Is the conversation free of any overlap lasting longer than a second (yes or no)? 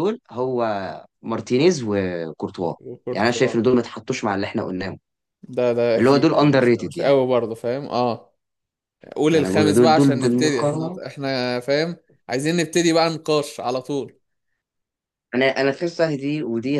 no